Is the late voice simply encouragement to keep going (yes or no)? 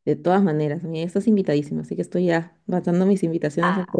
yes